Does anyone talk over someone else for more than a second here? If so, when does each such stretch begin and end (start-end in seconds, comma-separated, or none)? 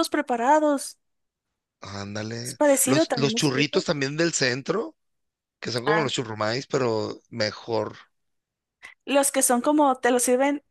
2.4-3.9